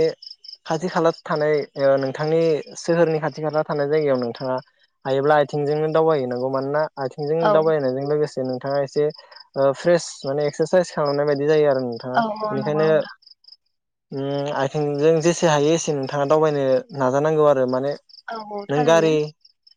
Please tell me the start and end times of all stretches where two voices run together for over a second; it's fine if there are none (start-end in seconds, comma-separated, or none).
none